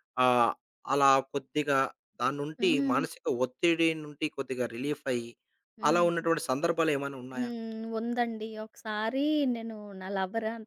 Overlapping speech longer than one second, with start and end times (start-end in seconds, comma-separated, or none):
none